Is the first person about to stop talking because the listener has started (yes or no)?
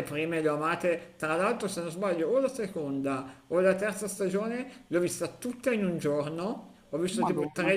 no